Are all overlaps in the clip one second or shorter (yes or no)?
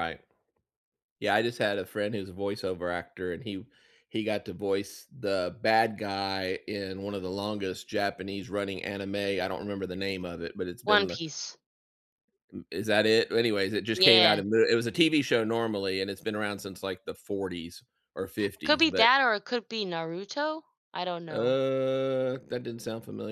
yes